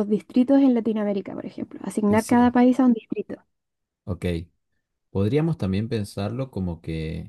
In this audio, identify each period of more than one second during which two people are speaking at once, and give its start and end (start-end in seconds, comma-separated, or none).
none